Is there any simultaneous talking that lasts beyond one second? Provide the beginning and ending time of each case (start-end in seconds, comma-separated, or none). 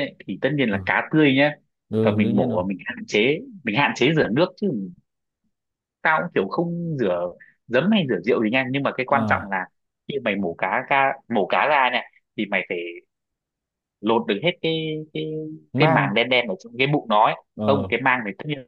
none